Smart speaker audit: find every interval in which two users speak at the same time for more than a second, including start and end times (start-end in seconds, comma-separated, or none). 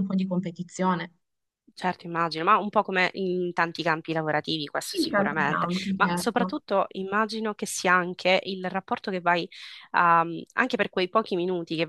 4.9-6.5